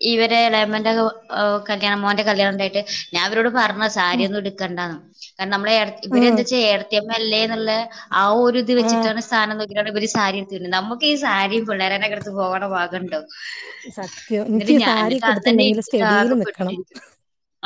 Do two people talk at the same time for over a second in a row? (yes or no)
yes